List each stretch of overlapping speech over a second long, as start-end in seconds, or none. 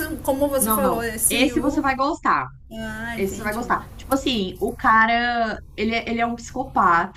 0.6-1.8